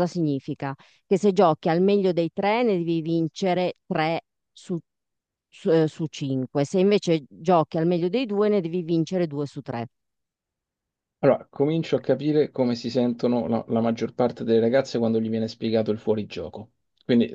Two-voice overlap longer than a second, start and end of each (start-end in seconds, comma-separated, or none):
none